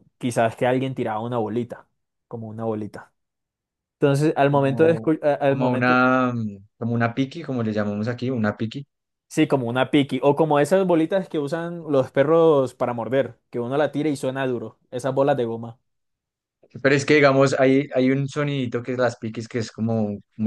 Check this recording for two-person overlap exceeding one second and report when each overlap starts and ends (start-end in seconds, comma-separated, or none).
4.5-6.0